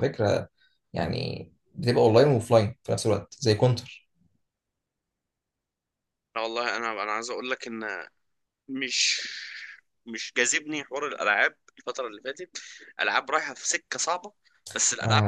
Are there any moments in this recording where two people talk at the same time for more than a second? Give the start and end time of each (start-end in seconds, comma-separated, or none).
none